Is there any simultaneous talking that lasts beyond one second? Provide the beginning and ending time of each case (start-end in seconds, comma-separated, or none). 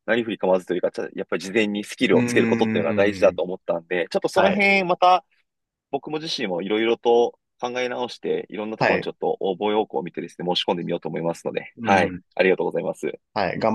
2.1-3.4